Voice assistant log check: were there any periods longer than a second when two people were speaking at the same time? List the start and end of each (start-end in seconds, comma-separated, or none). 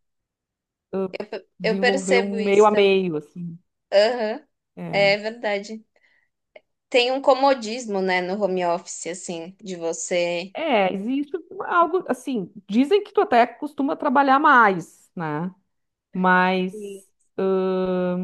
1.6-3.0